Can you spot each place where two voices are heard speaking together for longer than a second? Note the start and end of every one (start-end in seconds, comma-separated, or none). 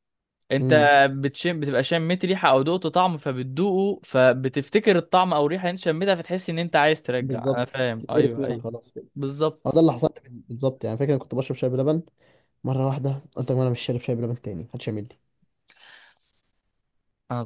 7.2-8.7